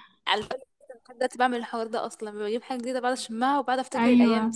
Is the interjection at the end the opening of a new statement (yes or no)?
yes